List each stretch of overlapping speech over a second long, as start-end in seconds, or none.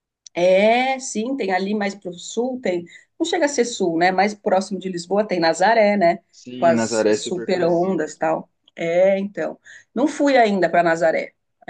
6.5-8.2